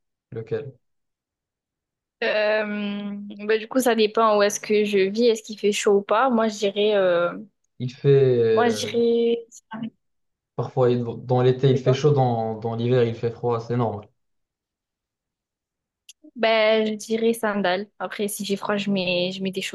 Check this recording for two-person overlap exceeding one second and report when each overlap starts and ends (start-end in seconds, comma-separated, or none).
none